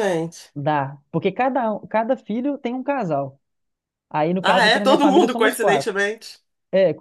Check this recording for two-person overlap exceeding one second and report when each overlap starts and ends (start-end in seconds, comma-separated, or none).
4.4-5.9